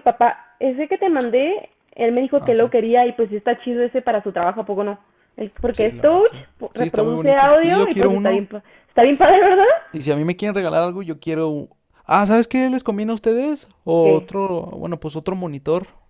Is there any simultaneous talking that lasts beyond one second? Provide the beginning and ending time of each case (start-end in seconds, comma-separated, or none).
5.7-8.5